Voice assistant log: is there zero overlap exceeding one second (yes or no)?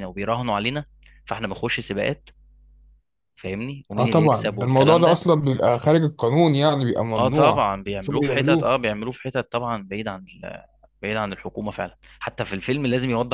no